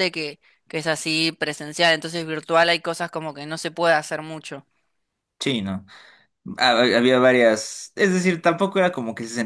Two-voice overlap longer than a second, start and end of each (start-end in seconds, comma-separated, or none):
none